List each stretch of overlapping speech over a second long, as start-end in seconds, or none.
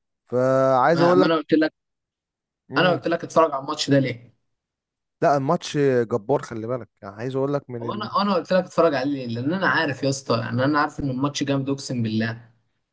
none